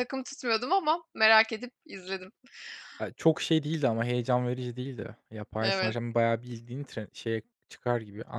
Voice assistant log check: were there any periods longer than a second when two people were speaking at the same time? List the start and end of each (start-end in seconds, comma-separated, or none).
none